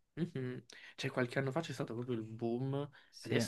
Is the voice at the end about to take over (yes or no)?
no